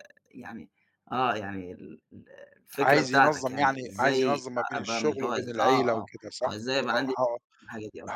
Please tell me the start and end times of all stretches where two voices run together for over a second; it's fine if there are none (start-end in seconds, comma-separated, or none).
2.8-7.1